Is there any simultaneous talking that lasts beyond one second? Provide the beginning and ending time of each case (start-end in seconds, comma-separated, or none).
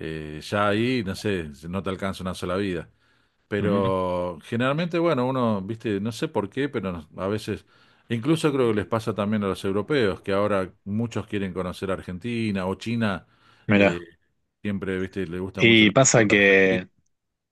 15.6-16.8